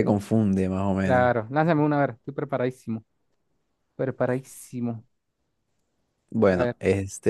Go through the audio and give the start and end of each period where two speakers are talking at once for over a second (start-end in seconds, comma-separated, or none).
none